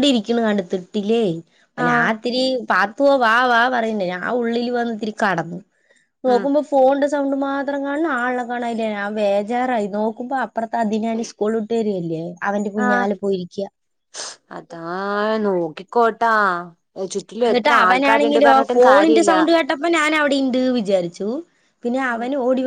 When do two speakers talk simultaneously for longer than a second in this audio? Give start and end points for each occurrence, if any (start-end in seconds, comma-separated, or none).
17.5-19.3